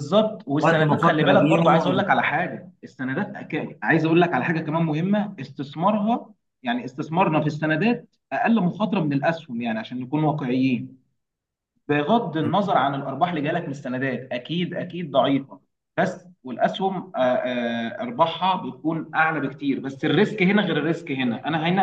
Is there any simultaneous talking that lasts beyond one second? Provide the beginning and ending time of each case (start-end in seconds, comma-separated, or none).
0.6-2.2